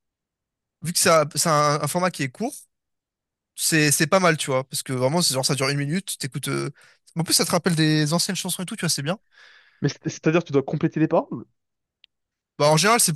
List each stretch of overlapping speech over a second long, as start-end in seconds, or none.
none